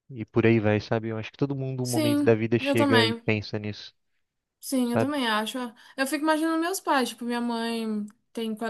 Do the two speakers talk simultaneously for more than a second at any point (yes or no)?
yes